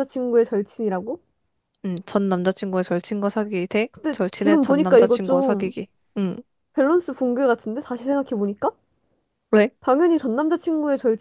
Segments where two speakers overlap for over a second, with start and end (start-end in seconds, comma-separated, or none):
3.9-5.7